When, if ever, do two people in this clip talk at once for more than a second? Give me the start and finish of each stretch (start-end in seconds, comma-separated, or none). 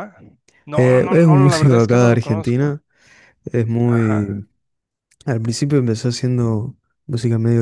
0.7-2.8